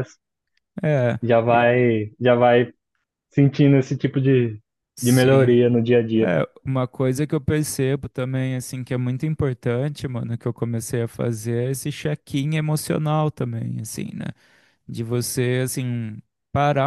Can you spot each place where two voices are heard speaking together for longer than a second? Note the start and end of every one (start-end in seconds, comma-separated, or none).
none